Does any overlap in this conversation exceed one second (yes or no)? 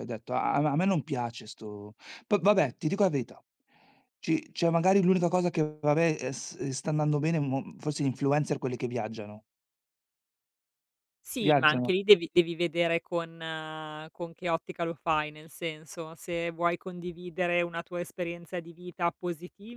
no